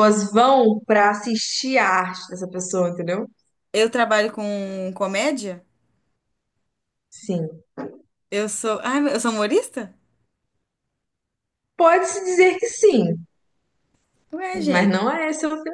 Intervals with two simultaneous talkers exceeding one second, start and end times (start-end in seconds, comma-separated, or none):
none